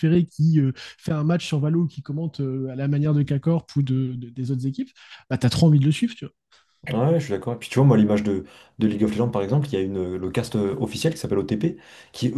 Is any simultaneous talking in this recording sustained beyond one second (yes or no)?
no